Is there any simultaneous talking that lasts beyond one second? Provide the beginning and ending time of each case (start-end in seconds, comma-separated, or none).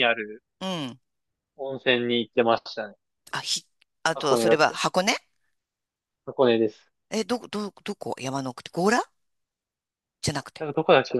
none